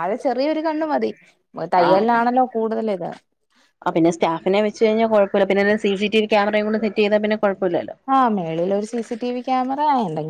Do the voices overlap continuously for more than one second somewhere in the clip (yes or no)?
no